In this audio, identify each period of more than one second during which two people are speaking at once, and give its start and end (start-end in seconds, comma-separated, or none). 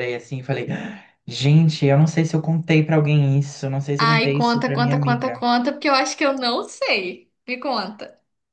4.0-5.3